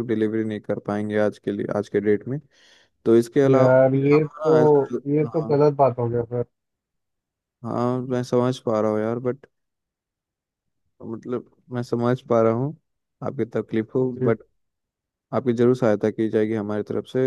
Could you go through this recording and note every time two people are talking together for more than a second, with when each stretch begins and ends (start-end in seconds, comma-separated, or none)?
3.5-5.6